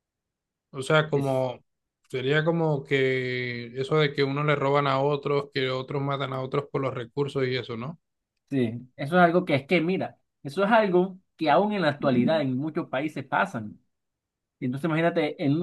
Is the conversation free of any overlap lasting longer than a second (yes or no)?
yes